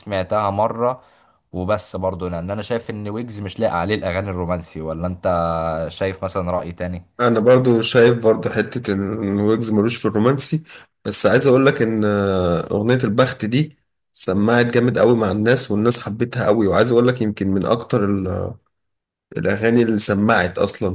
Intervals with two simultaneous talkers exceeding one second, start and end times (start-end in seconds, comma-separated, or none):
none